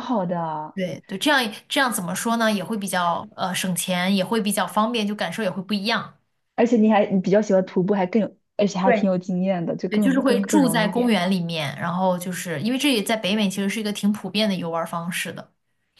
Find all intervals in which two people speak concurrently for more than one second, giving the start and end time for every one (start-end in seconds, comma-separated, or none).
9.9-11.2